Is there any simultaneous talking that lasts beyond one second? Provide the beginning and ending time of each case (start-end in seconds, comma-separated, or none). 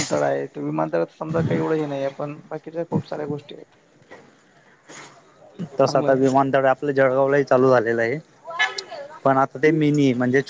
none